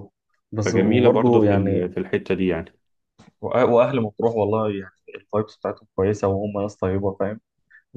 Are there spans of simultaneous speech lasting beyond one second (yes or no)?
yes